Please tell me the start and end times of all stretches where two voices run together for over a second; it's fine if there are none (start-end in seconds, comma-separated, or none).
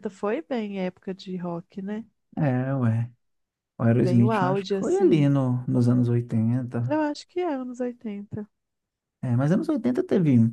4.0-5.3